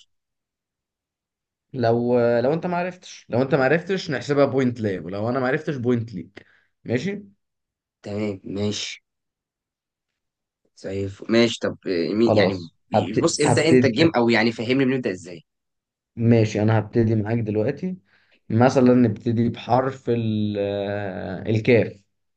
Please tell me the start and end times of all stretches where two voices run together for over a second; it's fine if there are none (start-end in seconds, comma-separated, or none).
12.2-14.1